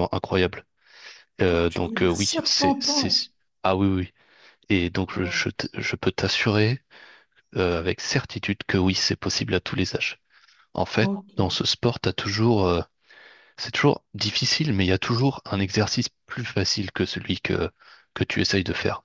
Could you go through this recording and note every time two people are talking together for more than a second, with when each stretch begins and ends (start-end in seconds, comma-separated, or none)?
1.5-3.1